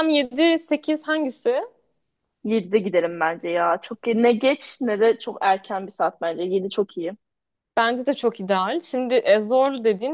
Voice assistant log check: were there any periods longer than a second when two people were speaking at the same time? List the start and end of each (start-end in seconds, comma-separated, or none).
none